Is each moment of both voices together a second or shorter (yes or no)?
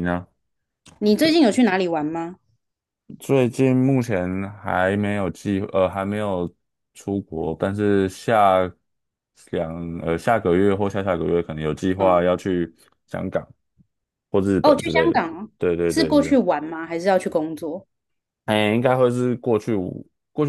yes